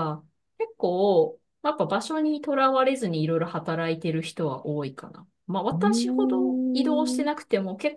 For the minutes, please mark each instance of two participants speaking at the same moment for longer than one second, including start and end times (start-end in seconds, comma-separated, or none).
5.7-7.4